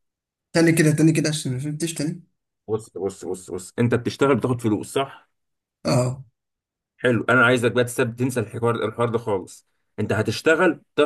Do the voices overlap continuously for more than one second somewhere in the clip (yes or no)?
no